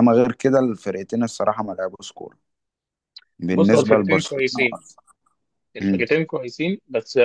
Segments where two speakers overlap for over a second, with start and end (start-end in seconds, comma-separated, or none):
3.5-4.8